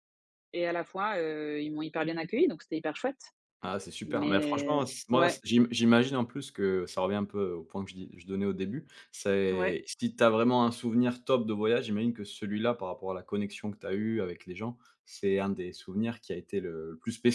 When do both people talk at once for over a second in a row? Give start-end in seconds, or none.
4.0-5.4